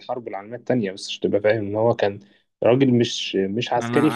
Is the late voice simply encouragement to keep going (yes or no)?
no